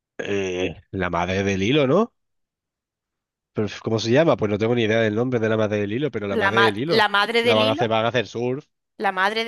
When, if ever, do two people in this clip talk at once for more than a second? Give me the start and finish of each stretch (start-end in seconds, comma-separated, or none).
6.3-7.9